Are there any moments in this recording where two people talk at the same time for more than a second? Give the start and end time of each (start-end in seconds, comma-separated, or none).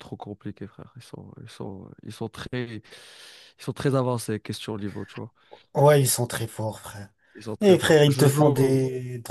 7.6-8.8